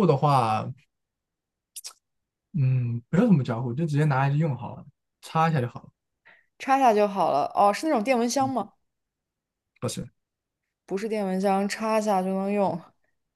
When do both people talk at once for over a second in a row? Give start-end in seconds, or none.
none